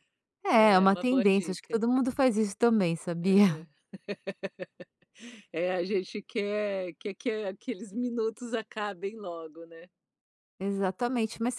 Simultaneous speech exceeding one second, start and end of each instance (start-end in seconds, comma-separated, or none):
0.5-1.8